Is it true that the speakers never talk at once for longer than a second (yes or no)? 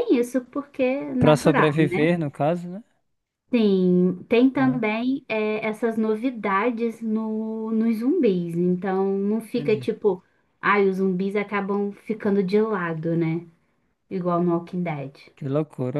yes